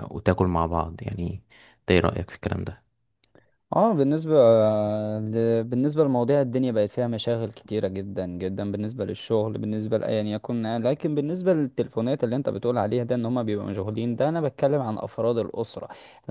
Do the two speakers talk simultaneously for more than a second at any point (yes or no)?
no